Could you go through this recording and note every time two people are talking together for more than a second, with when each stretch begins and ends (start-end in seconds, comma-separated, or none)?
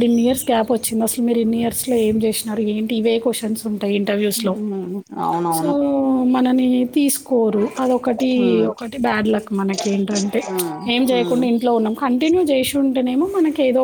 none